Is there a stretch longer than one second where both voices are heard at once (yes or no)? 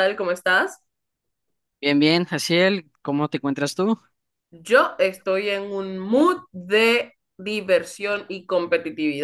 no